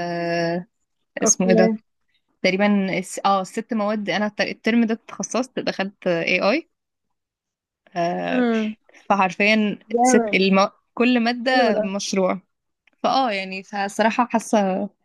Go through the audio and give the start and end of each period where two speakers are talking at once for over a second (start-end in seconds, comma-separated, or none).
none